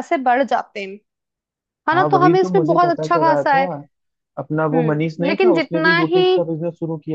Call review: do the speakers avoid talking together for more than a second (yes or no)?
no